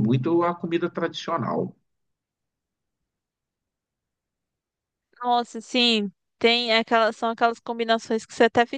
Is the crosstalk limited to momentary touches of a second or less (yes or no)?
yes